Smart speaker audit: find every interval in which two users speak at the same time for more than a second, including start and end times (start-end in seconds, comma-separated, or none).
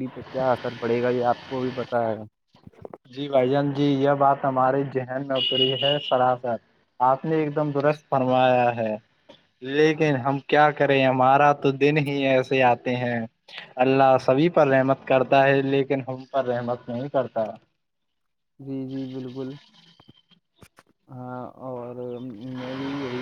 none